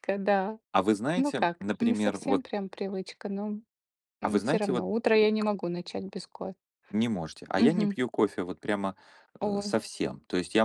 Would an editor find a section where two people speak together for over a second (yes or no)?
yes